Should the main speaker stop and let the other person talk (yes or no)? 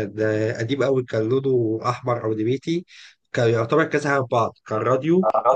no